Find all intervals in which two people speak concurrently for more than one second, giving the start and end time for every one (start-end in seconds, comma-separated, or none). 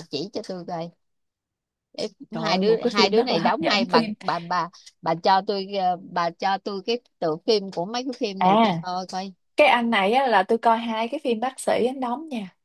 2.4-4.1